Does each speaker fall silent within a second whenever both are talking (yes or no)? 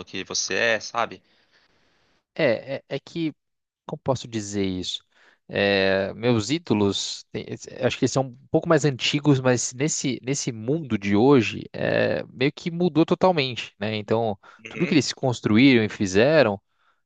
yes